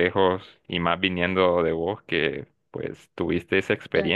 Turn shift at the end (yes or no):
yes